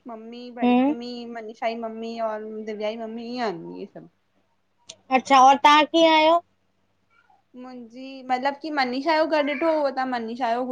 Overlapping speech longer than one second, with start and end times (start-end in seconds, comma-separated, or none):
none